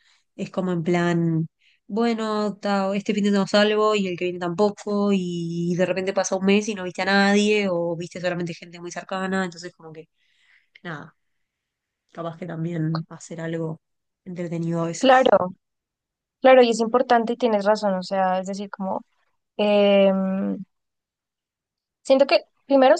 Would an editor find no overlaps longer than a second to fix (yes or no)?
yes